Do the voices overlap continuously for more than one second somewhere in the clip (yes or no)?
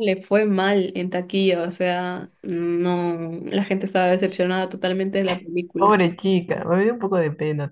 no